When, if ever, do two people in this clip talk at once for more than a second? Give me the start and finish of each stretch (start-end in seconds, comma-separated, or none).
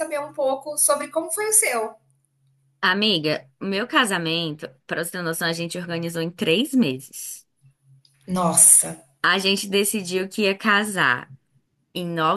none